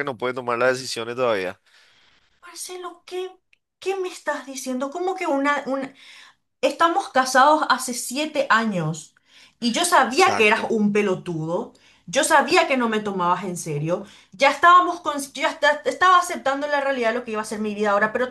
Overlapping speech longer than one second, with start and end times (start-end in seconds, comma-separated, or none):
none